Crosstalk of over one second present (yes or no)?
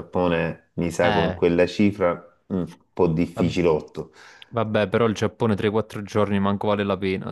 no